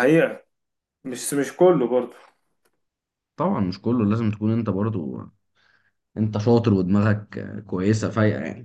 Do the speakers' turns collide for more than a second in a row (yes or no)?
no